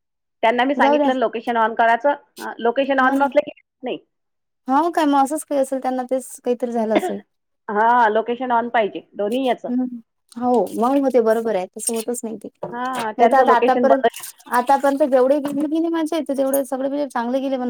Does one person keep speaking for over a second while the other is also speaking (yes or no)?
yes